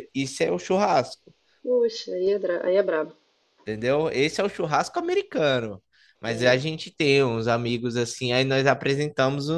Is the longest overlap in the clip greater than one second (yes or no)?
no